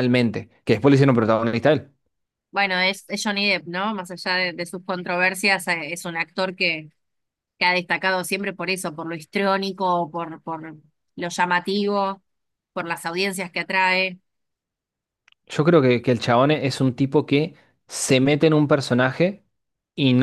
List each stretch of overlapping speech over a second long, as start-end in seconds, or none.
none